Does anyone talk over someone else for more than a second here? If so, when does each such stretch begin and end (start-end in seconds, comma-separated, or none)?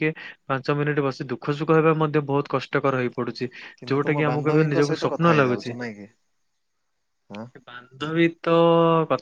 3.9-5.7